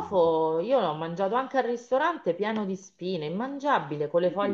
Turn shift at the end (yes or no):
yes